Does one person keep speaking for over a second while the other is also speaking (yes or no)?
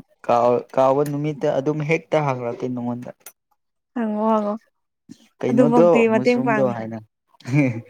yes